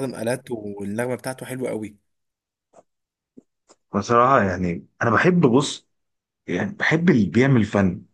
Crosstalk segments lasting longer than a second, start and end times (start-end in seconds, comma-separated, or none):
none